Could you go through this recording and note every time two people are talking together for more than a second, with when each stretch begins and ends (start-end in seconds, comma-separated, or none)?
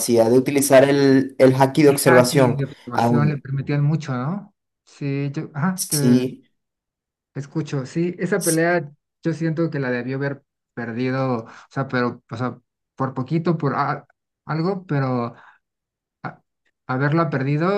1.9-3.4